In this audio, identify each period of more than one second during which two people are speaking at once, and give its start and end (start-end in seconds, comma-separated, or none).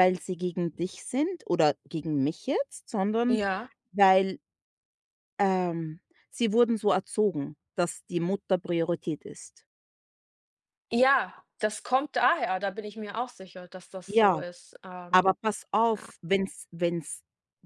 none